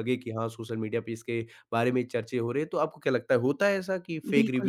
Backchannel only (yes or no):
no